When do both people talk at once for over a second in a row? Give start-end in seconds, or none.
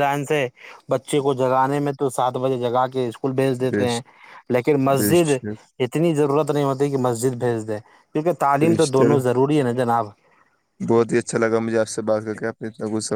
none